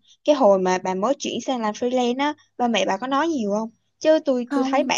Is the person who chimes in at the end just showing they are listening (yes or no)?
yes